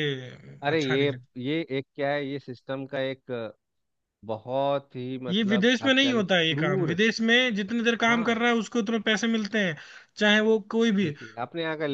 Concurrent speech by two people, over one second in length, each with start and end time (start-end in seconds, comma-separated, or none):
5.3-7.0